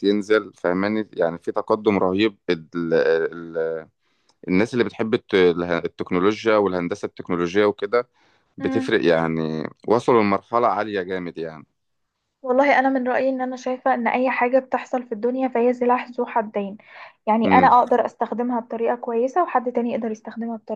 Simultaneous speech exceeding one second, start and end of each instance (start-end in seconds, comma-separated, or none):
none